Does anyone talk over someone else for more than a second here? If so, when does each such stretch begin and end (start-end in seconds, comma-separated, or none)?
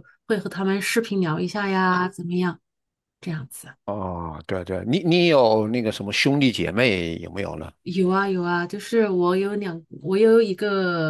none